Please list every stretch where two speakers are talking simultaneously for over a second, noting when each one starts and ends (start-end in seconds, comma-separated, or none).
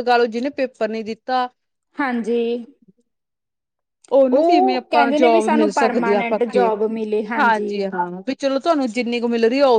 4.3-6.7